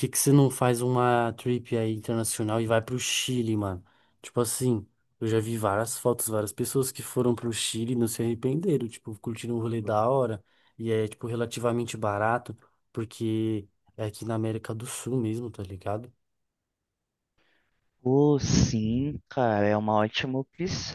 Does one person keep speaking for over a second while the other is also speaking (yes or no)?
no